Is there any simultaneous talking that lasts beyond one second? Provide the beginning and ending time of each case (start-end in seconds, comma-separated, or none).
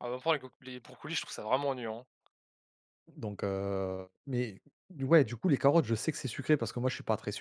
none